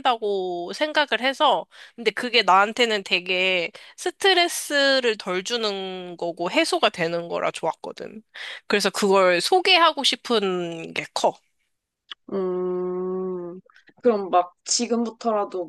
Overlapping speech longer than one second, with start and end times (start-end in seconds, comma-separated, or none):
none